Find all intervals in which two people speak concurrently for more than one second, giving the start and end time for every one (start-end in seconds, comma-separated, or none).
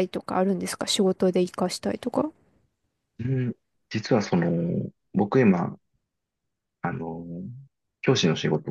none